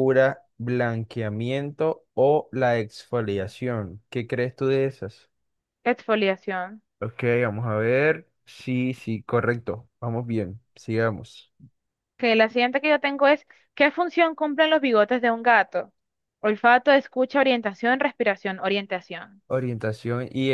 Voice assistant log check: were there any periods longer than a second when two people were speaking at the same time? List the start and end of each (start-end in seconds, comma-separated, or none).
none